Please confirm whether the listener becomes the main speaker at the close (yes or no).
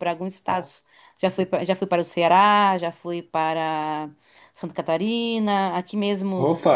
no